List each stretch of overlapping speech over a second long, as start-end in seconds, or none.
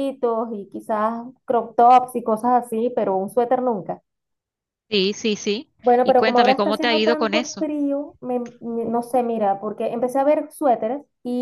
5.8-7.7